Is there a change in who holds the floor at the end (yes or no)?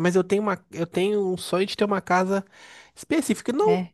no